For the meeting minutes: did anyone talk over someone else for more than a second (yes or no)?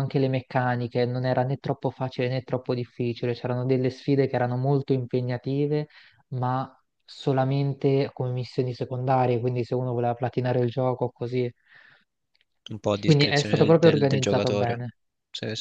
yes